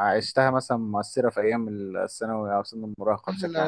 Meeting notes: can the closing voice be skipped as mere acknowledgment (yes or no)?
no